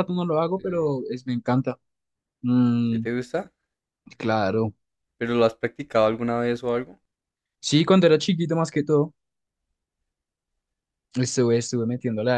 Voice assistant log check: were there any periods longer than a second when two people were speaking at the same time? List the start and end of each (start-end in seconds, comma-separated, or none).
none